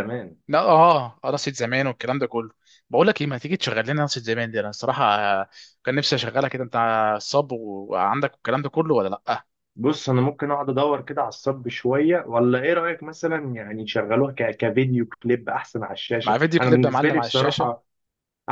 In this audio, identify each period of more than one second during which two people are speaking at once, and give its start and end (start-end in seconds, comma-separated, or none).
16.2-17.7